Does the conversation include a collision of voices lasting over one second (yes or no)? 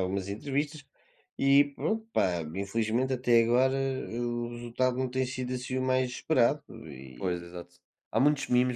no